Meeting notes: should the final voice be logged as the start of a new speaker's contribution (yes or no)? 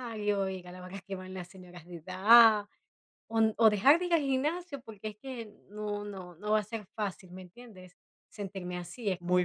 yes